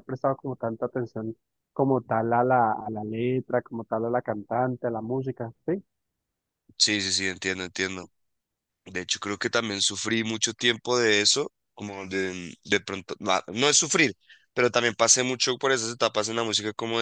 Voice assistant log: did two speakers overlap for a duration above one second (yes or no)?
no